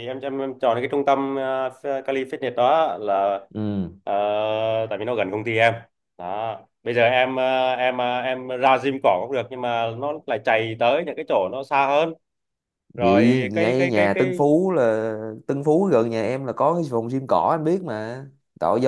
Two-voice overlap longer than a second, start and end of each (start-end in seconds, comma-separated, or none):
13.0-14.4